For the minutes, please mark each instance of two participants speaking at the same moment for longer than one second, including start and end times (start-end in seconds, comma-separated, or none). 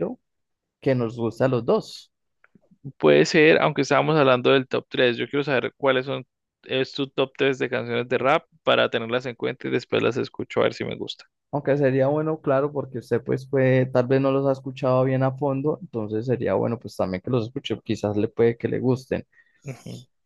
none